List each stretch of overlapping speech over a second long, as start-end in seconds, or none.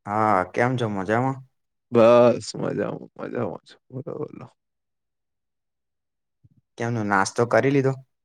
none